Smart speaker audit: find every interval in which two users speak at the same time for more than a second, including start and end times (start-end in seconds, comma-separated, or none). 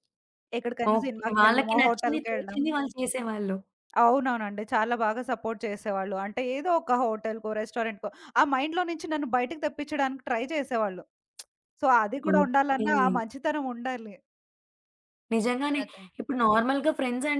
0.9-2.6